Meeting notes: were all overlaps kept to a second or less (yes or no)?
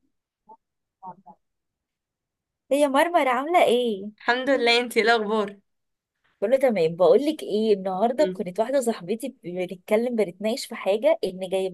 yes